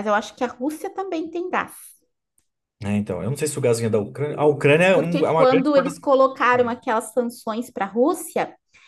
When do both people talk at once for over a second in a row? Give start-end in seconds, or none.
4.9-6.8